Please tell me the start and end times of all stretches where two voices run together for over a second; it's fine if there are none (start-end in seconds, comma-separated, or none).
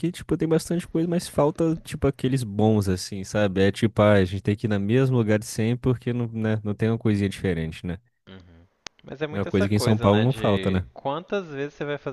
9.3-10.9